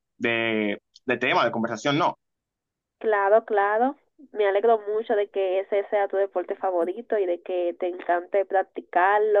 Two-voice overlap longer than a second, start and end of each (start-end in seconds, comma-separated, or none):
none